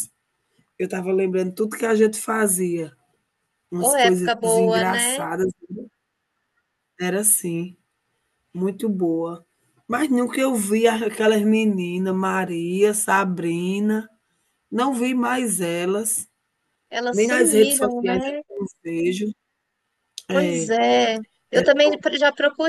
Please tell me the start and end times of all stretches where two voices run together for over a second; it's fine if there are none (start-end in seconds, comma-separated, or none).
3.8-5.3, 17.1-18.4